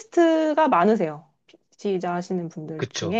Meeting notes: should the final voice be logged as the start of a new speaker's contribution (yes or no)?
yes